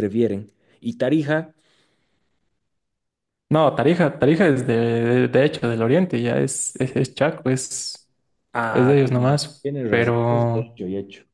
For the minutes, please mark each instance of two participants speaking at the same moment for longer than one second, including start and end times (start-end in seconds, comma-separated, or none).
8.7-10.8